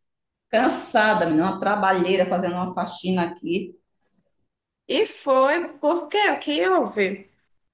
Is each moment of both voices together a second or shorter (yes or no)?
yes